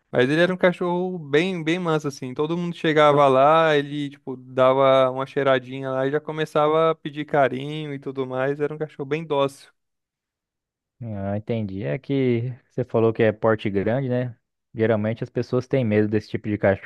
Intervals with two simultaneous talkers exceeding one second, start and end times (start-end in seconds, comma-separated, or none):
none